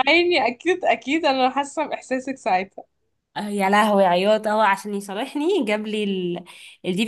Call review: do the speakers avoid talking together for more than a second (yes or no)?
yes